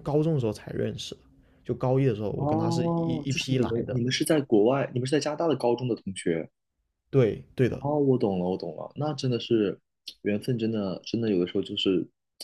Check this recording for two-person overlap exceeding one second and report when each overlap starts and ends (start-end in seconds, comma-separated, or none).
2.4-4.0